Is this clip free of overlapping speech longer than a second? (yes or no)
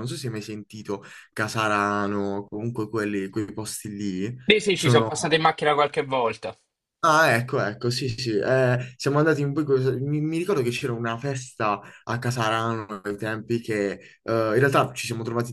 yes